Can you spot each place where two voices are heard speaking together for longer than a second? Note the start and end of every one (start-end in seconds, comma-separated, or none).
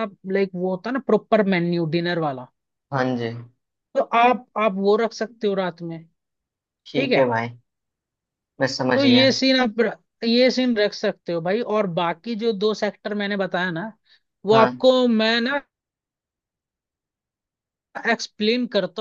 none